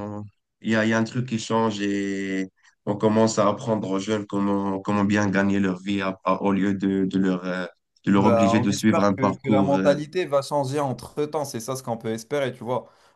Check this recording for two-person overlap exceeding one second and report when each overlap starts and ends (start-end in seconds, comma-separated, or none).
8.2-10.0